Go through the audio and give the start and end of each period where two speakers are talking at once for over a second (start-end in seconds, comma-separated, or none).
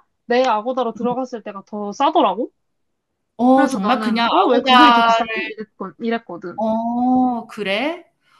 3.5-5.2